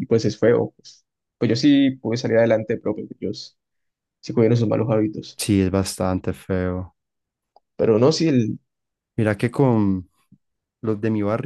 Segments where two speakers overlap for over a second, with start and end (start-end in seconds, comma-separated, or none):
none